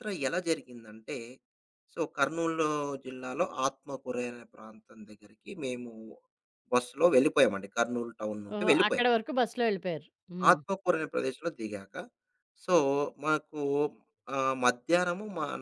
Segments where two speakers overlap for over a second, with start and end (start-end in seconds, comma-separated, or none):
none